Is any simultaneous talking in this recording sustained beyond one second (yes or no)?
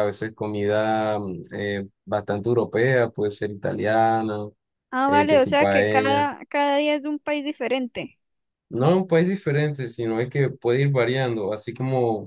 yes